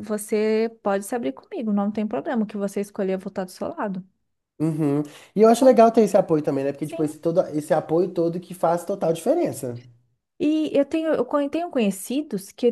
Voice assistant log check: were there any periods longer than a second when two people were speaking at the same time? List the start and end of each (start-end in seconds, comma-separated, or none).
none